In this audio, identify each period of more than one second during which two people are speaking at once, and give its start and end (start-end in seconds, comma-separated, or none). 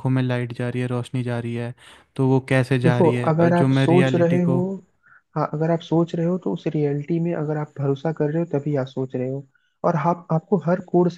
2.8-4.6